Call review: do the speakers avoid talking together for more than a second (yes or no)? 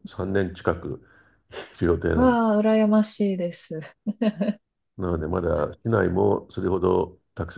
yes